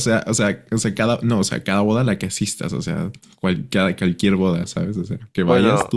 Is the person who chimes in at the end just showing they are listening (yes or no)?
no